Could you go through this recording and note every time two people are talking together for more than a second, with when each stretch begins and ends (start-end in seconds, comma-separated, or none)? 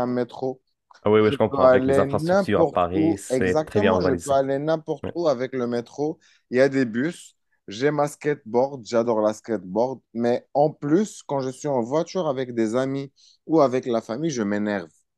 1.2-4.3